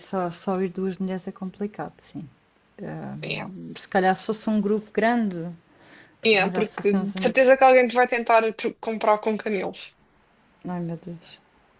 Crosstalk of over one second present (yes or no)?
yes